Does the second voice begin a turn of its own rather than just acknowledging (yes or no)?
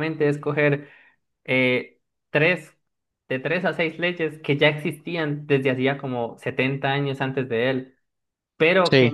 no